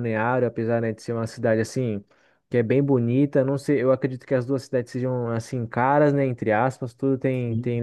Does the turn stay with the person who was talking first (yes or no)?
yes